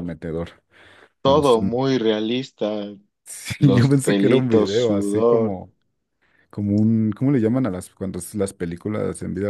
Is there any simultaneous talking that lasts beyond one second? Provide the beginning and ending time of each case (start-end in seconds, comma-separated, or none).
3.6-5.6